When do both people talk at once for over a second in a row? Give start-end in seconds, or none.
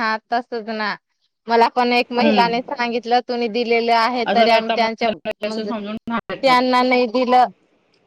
4.3-5.7